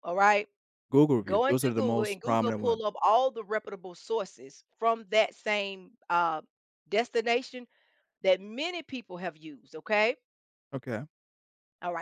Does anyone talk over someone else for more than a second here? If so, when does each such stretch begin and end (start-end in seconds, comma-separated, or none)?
1.2-2.9